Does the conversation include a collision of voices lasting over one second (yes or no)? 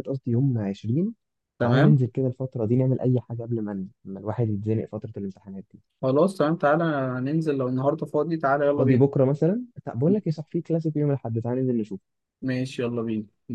no